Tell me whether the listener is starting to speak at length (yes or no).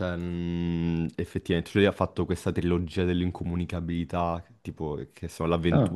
no